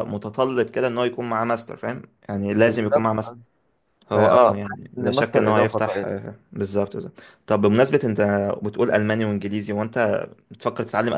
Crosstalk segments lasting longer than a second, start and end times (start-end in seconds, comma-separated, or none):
4.1-6.1